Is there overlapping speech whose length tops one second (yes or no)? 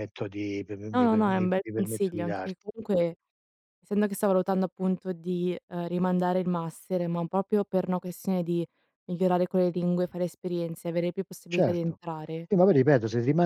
yes